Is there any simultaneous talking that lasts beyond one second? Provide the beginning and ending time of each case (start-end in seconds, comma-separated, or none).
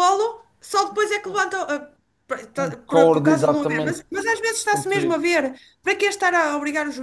2.5-4.1